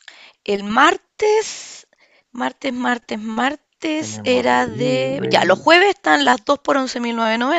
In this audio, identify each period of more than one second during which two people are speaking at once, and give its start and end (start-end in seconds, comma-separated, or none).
4.0-5.7